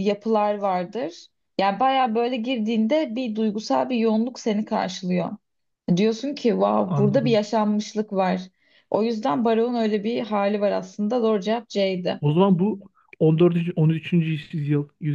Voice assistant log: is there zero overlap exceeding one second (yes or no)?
yes